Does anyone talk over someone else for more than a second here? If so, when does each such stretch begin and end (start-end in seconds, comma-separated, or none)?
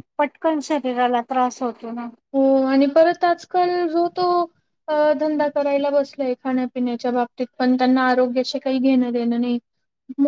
none